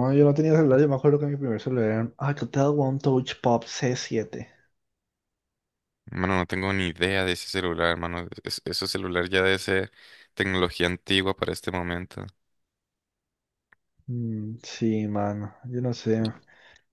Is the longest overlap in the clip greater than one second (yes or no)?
no